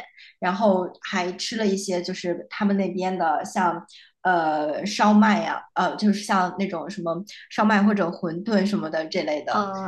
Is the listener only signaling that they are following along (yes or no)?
no